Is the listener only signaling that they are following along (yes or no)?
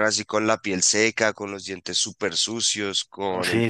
no